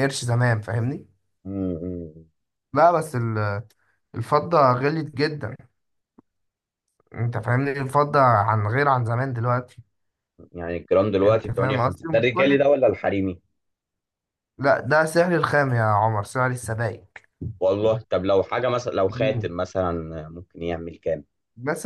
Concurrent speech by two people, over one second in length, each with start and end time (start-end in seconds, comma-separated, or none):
11.2-12.7